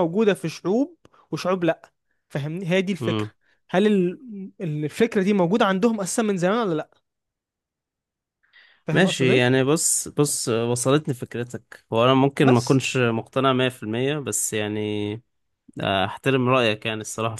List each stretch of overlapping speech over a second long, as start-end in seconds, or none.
none